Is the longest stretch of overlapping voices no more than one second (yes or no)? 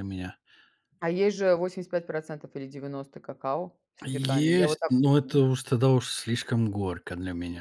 no